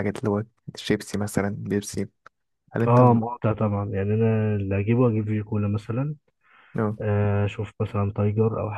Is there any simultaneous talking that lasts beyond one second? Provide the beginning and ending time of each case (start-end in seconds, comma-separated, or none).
none